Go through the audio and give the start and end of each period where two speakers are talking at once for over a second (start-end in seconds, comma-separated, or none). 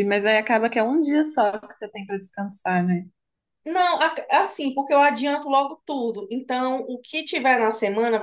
none